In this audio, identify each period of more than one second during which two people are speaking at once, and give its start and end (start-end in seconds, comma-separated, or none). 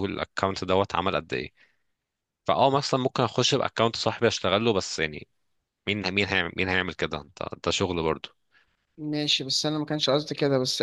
none